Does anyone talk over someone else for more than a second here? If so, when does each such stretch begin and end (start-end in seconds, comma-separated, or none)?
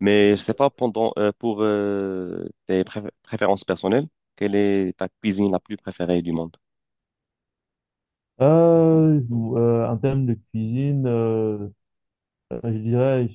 none